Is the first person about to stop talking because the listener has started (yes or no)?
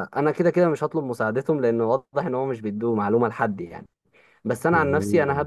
no